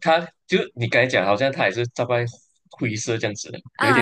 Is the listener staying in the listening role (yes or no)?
no